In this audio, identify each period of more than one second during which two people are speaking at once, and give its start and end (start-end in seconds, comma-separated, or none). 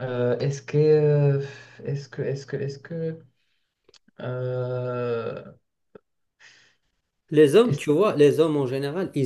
none